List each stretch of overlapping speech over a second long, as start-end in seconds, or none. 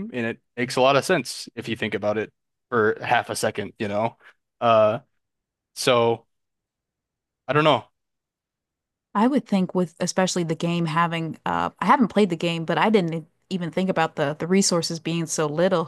none